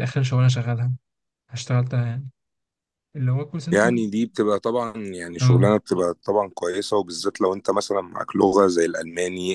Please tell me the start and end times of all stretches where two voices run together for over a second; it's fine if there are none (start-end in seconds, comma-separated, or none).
none